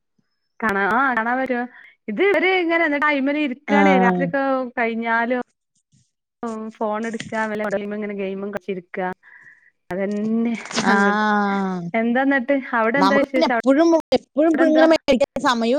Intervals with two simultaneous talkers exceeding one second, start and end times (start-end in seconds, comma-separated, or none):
none